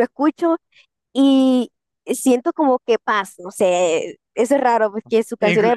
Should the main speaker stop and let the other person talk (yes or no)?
no